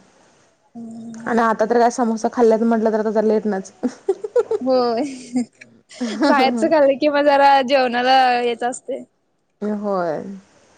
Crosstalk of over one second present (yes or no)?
no